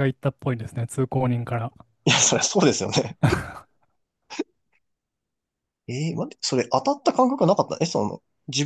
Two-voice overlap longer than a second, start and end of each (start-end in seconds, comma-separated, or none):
none